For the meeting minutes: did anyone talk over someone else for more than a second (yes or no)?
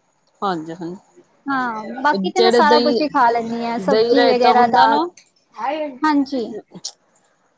yes